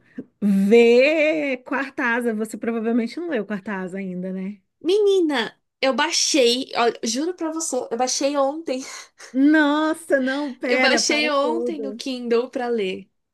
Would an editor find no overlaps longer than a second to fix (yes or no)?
no